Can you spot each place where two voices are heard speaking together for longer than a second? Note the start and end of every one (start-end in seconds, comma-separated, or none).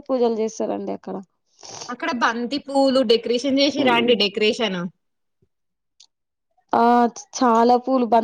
none